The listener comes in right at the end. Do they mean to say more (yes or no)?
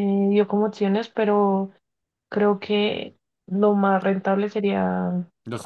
no